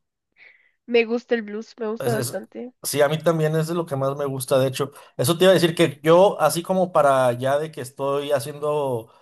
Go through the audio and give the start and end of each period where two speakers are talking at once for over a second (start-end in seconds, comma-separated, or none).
none